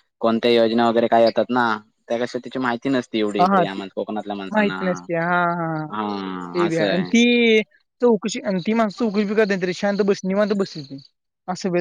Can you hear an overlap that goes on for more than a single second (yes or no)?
no